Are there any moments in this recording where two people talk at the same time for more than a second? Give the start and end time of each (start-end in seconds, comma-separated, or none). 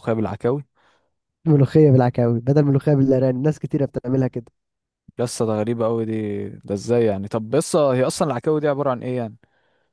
none